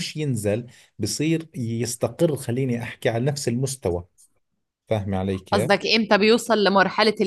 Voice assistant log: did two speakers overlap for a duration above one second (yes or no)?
no